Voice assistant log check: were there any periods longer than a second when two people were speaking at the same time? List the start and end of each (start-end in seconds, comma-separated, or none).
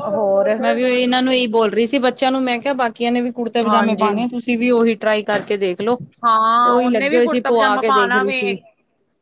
none